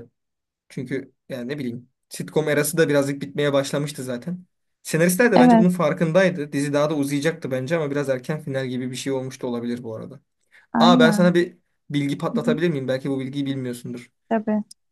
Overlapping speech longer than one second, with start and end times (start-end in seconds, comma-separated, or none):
none